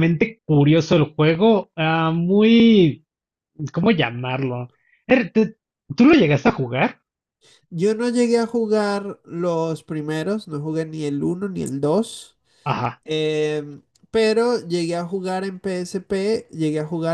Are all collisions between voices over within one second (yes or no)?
yes